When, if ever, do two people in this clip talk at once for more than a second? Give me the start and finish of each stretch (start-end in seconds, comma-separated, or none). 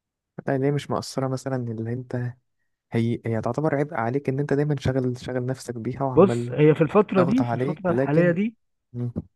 7.2-8.4